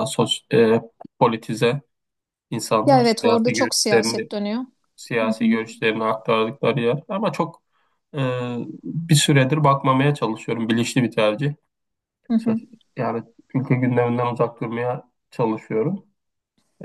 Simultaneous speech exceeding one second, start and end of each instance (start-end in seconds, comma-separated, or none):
2.9-4.3